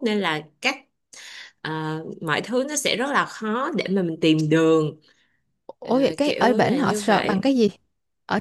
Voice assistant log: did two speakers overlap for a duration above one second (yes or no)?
yes